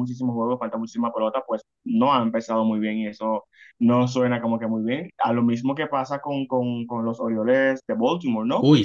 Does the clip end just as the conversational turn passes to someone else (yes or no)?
no